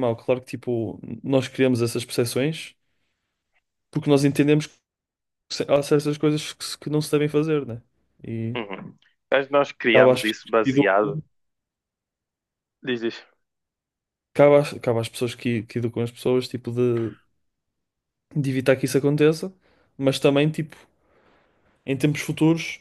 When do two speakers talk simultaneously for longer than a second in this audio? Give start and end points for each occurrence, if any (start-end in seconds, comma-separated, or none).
9.9-11.2